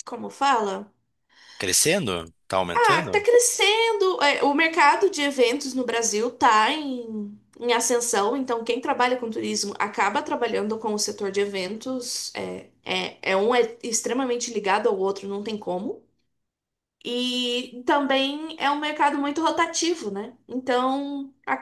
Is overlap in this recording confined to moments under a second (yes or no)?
yes